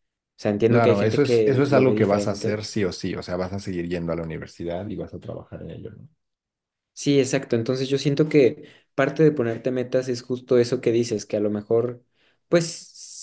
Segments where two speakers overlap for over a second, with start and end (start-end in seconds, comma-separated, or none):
0.7-2.6